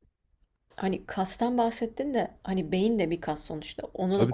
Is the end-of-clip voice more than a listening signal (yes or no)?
no